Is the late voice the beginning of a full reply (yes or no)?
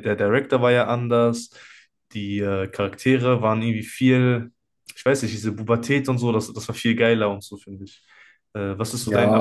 yes